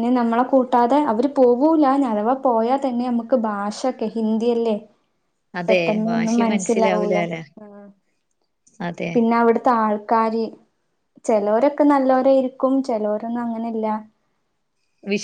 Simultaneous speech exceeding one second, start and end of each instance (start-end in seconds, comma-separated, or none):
5.7-7.2